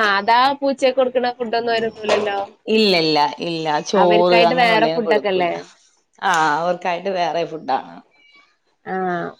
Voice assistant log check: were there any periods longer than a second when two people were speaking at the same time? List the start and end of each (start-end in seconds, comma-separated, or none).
4.0-5.5